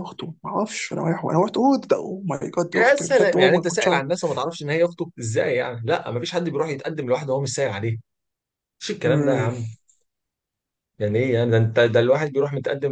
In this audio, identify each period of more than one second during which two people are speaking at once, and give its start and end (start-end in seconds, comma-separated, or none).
2.7-4.0